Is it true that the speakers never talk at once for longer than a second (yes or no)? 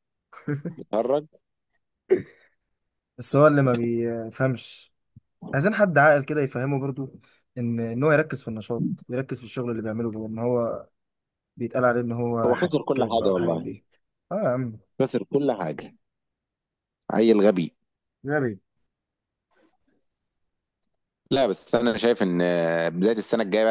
no